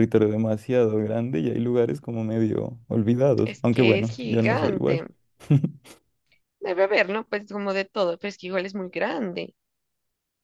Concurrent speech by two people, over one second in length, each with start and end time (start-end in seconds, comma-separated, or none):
3.4-5.0